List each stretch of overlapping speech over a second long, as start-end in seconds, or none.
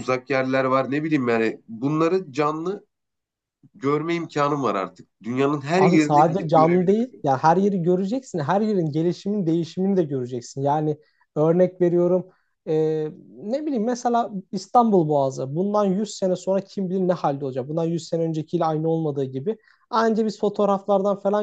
5.8-7.3